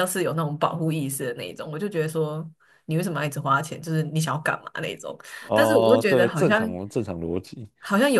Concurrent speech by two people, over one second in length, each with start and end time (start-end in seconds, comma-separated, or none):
5.5-6.8